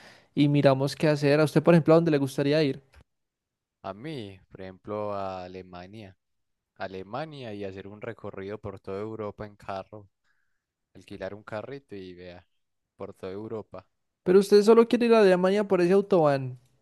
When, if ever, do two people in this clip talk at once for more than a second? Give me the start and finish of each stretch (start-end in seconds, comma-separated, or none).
none